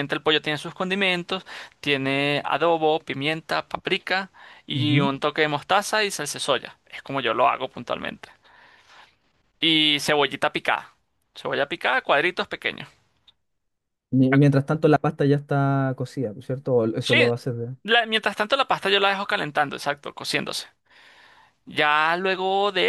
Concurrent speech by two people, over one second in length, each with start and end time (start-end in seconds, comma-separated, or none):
none